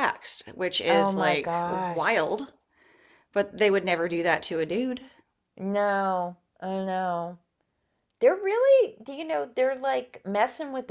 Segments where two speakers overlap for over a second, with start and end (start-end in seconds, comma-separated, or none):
0.9-2.2